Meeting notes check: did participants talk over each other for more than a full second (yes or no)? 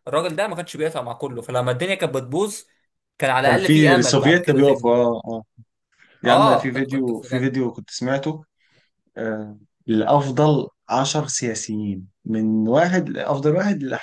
yes